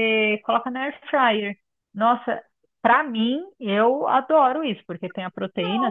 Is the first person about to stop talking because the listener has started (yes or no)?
no